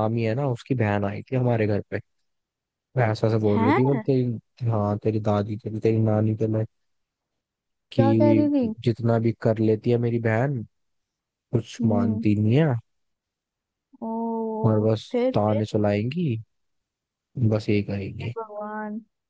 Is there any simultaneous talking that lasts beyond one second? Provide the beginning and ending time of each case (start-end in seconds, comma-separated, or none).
none